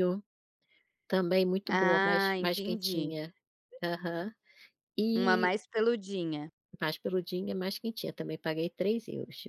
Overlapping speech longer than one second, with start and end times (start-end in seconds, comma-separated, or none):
1.7-3.1